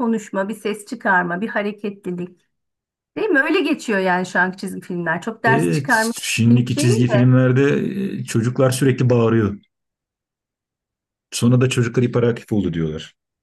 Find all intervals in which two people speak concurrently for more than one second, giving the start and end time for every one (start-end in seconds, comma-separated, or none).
5.5-7.3